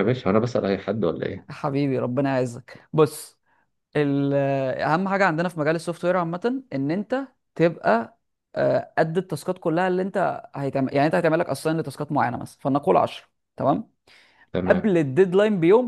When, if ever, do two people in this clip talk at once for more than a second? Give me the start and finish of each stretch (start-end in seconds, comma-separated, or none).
none